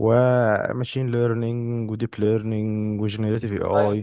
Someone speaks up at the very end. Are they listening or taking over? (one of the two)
taking over